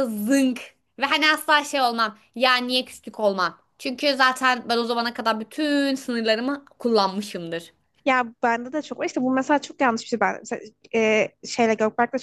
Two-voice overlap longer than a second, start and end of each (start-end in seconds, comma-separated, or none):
none